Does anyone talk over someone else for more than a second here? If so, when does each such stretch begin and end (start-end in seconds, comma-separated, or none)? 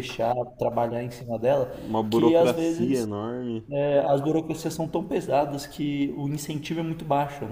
1.7-3.1